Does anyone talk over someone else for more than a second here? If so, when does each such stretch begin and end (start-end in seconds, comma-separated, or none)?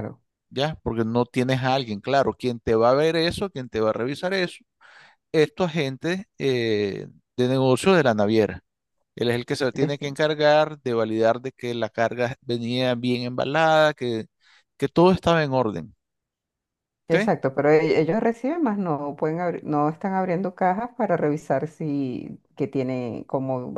none